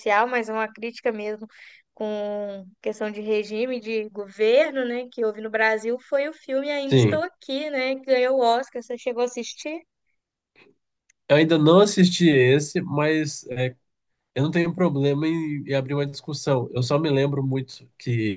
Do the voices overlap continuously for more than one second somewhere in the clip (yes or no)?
no